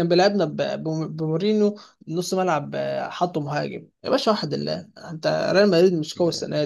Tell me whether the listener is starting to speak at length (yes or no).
no